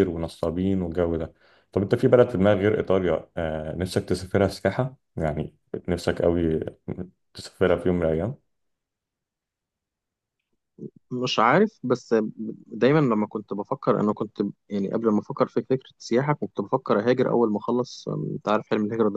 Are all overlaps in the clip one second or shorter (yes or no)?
yes